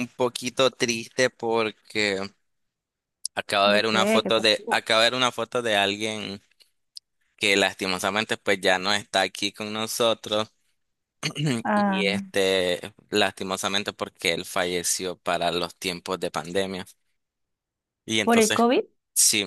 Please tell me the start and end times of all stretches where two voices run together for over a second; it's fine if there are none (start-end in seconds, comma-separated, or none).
3.6-4.8